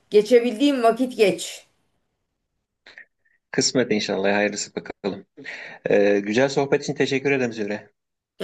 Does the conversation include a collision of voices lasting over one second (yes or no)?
no